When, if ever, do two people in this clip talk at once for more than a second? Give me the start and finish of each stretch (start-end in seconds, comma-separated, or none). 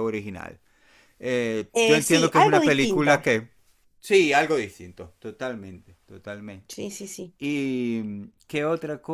1.7-3.2